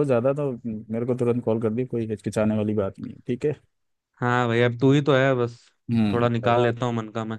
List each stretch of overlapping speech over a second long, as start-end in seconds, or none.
none